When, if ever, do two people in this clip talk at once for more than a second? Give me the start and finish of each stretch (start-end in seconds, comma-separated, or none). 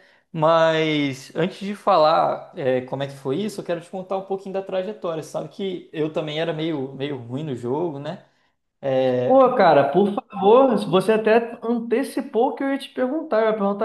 none